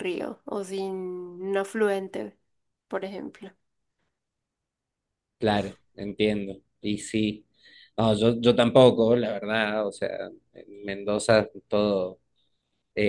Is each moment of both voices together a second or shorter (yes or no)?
yes